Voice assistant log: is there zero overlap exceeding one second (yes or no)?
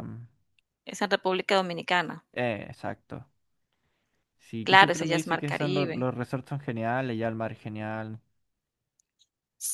no